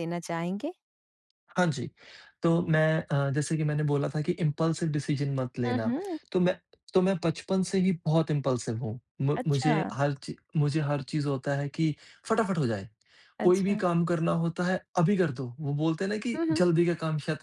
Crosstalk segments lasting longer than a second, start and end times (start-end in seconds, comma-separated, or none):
none